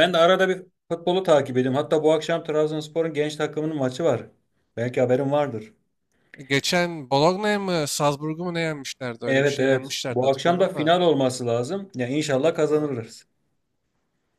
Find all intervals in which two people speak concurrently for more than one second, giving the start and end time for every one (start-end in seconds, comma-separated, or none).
9.3-10.9